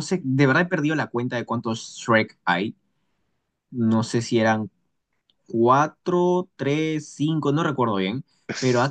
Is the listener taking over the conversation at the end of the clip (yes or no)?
no